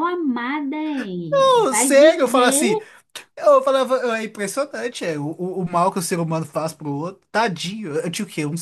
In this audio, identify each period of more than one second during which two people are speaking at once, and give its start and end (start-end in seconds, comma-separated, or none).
1.3-2.8